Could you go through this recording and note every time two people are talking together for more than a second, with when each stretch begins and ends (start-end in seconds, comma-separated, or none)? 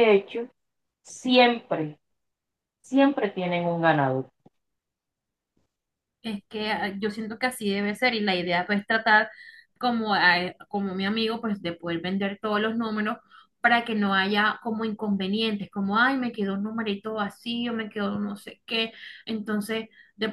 none